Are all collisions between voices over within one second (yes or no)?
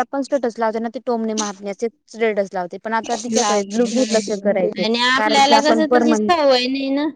no